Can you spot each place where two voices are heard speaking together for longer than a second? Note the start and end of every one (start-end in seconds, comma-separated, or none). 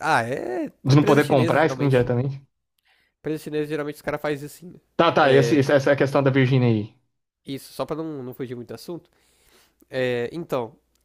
0.8-2.1